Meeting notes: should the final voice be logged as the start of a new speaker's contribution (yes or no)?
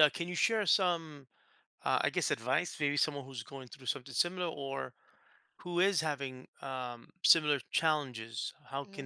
no